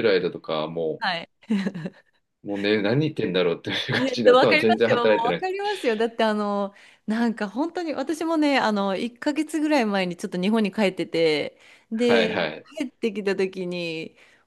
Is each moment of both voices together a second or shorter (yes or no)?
no